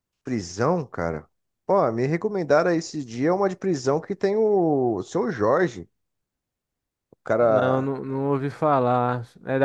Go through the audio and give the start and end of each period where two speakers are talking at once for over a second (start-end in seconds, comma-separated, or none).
none